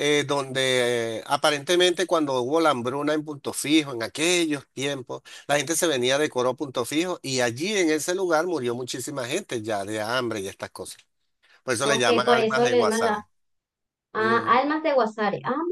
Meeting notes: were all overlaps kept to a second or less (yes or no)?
no